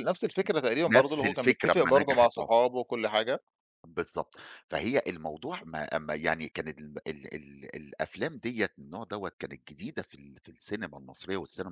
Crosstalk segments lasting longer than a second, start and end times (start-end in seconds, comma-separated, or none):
0.9-2.5